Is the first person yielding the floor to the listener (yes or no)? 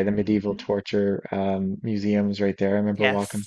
no